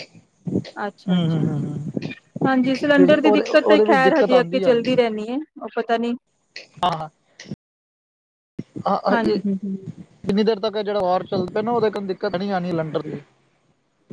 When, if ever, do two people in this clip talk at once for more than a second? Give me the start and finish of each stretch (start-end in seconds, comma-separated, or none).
3.0-4.3